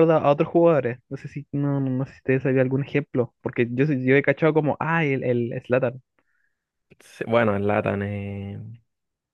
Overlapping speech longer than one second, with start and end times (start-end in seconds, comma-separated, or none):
none